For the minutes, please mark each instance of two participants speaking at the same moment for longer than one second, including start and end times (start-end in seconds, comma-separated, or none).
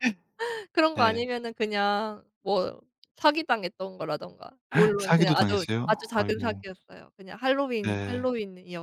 5.0-6.6